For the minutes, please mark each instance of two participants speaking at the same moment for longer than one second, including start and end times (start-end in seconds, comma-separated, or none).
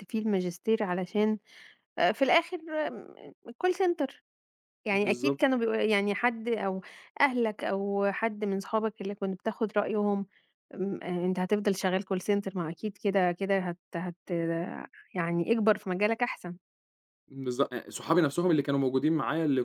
none